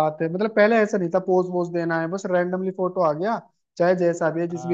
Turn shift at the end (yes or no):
yes